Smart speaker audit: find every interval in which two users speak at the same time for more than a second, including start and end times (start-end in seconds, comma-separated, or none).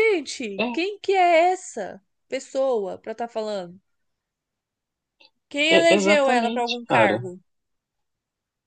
5.7-7.2